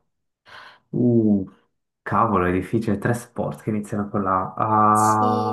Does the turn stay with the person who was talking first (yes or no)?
no